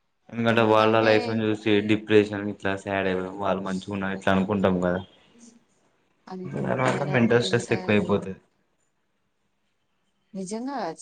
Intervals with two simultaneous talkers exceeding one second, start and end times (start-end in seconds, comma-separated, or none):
6.7-8.1